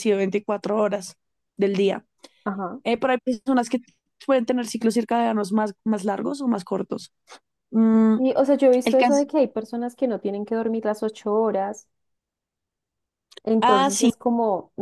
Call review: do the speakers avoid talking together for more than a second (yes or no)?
yes